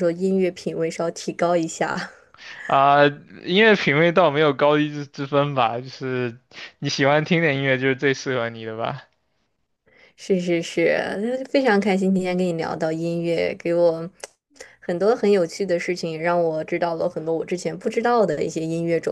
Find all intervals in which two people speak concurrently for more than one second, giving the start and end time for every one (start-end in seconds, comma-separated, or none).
none